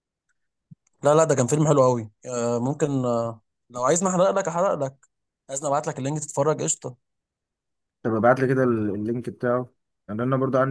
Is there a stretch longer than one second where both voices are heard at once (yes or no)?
no